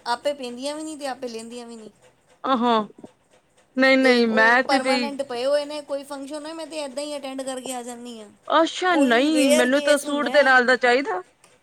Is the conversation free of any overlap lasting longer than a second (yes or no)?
no